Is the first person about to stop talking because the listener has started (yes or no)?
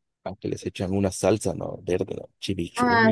yes